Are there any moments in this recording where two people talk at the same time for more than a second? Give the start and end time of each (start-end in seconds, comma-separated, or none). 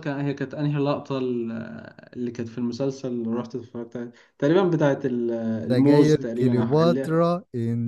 5.7-7.2